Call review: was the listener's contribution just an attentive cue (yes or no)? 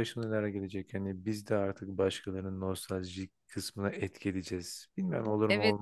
no